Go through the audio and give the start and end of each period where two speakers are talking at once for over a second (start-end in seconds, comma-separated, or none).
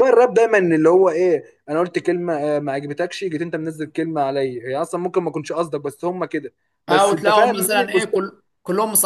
6.9-8.2